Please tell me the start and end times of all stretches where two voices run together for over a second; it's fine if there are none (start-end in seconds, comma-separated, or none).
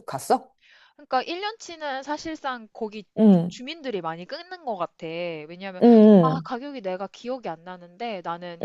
none